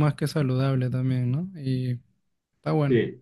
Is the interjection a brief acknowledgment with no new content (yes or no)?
no